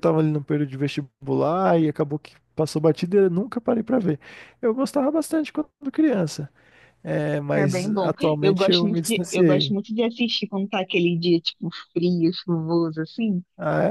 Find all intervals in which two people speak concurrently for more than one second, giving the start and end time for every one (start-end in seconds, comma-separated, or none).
7.5-9.8